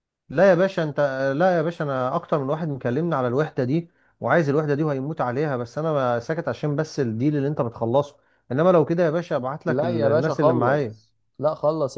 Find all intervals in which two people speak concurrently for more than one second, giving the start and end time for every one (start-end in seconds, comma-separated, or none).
9.7-11.0